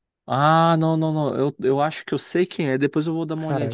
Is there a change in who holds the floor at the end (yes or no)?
yes